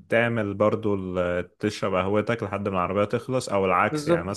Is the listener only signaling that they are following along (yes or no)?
yes